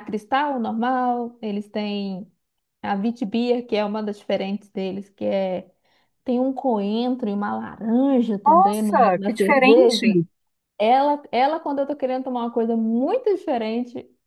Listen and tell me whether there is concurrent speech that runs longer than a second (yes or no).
yes